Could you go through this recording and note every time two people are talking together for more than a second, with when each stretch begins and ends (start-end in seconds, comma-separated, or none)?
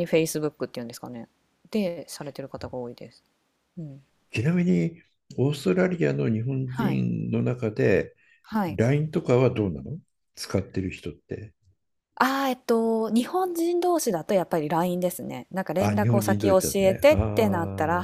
15.8-17.1